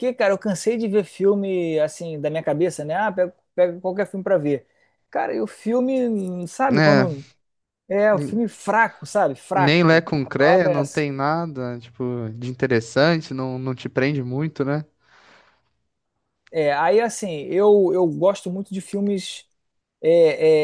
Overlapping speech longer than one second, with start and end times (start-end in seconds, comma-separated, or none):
9.5-11.1